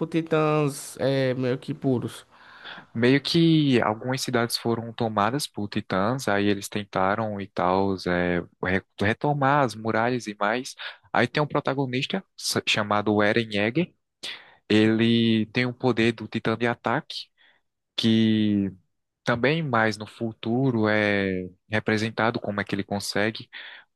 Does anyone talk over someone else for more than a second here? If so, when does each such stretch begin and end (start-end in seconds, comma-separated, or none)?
none